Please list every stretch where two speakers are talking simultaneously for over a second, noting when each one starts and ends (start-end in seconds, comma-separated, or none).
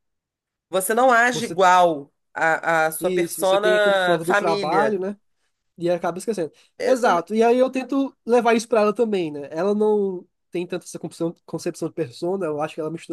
3.0-5.0